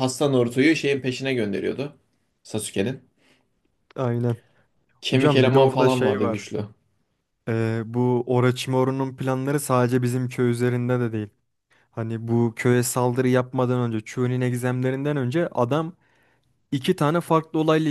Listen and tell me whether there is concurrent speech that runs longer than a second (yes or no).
yes